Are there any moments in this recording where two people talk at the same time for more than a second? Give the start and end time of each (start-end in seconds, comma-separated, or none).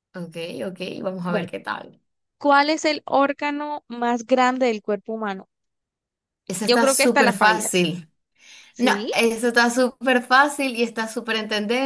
6.6-7.9